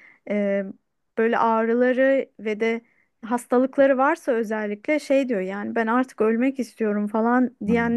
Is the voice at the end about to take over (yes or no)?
no